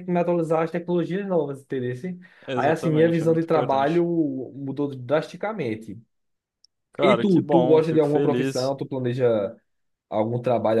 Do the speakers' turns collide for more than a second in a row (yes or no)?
yes